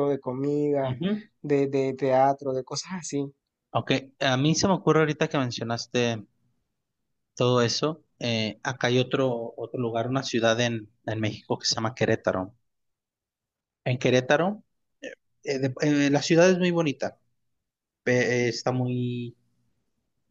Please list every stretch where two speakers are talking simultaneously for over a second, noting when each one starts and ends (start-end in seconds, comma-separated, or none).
none